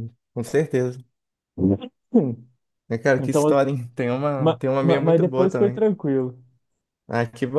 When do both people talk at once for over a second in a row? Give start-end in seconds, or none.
4.4-5.9